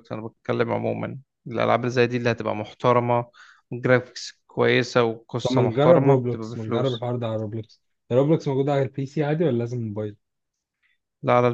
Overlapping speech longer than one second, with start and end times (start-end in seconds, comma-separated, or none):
5.4-7.1